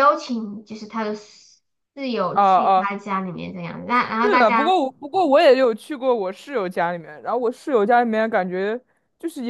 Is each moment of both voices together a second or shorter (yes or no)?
yes